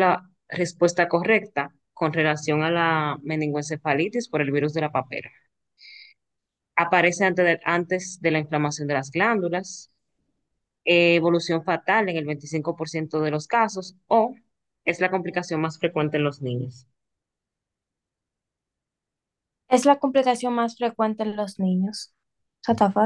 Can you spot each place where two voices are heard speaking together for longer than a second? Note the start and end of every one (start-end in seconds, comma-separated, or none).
none